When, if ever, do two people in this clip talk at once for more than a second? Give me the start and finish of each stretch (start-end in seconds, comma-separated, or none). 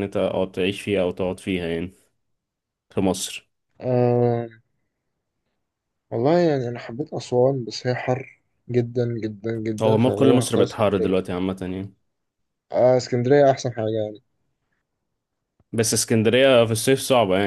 9.8-11.2